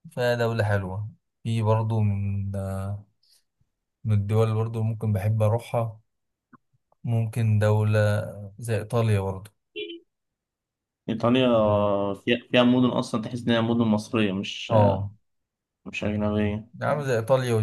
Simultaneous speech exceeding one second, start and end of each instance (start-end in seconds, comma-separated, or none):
none